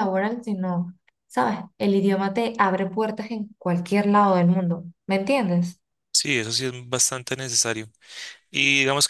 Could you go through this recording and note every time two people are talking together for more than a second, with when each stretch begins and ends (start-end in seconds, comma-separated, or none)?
none